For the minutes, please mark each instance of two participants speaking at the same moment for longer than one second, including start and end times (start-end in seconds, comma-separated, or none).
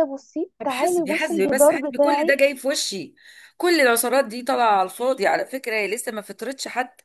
0.6-2.4